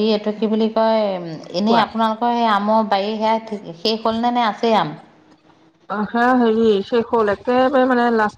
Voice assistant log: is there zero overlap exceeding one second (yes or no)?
yes